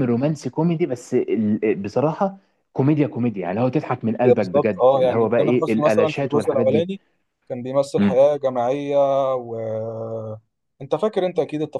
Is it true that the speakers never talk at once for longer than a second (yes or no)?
no